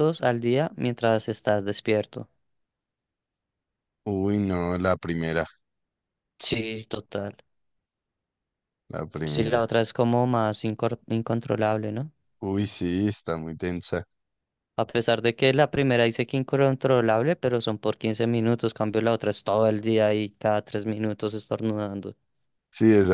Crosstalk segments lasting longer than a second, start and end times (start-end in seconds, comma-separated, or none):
none